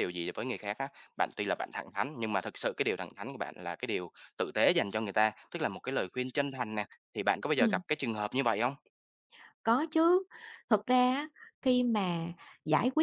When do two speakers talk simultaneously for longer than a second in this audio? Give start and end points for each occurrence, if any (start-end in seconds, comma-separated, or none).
none